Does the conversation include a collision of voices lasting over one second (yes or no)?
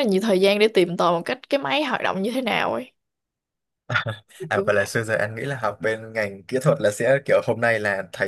no